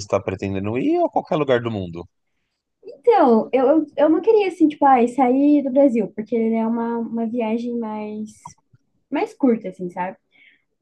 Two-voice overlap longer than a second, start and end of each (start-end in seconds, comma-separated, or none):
none